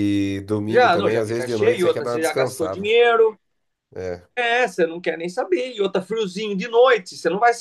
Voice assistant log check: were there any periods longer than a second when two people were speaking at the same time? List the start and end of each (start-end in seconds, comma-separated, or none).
0.7-2.9